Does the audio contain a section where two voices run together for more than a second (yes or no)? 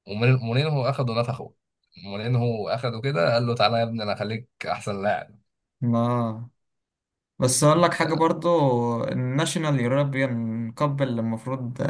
no